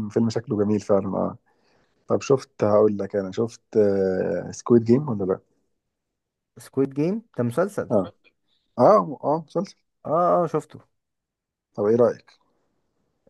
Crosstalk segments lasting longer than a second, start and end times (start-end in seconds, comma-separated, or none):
none